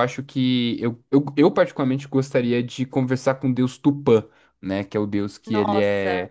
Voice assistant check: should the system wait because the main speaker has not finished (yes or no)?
yes